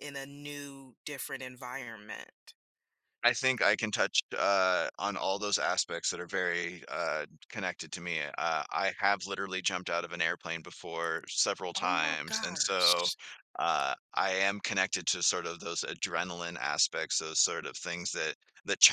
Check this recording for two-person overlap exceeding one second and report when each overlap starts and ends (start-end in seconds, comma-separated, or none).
11.8-13.1